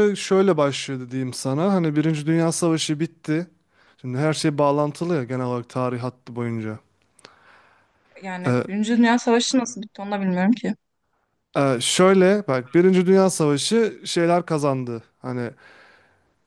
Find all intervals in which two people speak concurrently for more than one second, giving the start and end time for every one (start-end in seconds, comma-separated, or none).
none